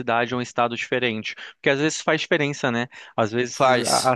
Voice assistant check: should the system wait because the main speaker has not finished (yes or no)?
yes